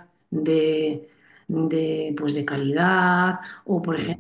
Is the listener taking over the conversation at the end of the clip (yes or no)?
no